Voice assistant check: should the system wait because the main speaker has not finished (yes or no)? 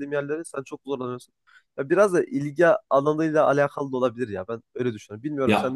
no